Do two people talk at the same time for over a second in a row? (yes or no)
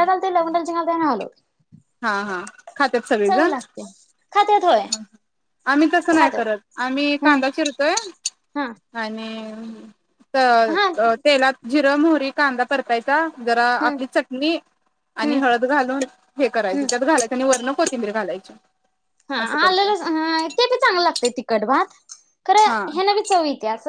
no